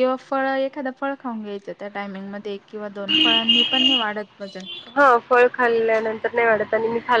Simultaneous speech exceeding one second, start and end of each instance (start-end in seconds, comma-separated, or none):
none